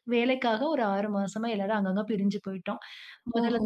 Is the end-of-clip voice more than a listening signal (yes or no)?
no